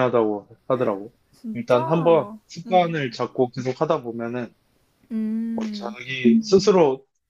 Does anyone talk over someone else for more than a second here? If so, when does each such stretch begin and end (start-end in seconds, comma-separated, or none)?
1.5-2.9